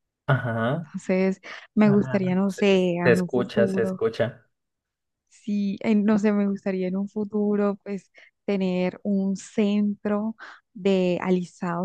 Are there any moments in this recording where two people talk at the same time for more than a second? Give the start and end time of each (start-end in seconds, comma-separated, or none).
1.8-4.0